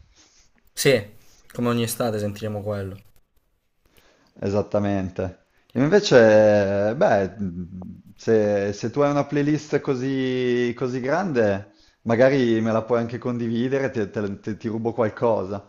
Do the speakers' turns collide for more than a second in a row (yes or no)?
no